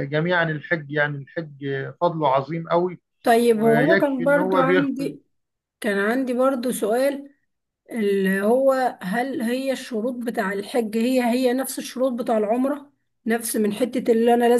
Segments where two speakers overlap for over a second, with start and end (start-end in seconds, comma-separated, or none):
3.5-5.2